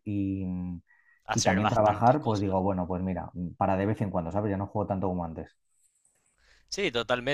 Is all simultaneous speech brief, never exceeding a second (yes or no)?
no